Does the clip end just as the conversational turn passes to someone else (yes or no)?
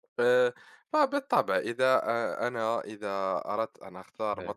no